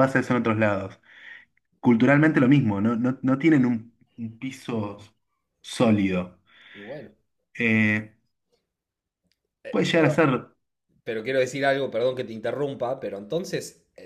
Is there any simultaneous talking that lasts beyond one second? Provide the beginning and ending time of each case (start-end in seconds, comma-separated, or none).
none